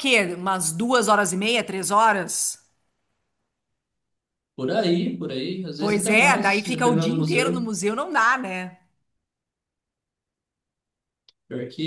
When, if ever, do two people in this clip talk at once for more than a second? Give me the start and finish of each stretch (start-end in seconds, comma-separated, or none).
5.8-7.7